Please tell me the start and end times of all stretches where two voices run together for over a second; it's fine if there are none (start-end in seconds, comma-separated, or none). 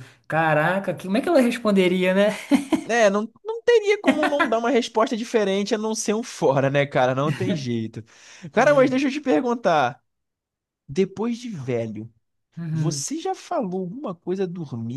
none